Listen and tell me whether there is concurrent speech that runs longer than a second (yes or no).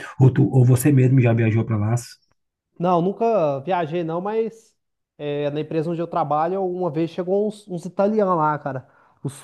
no